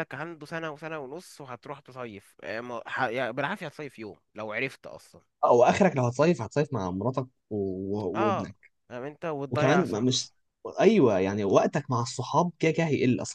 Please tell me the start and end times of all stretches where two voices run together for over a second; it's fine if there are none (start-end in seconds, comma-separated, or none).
none